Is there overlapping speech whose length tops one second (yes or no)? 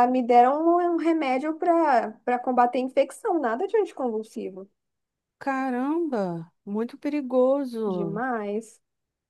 no